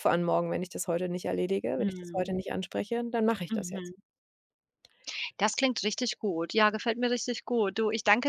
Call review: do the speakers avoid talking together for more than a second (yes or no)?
yes